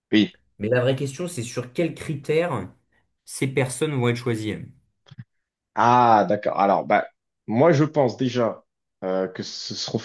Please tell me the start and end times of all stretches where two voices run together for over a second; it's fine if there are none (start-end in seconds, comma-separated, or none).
none